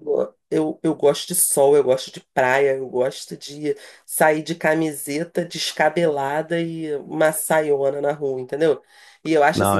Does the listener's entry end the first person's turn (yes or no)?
yes